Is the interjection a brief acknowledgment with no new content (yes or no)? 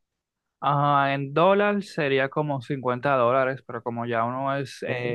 yes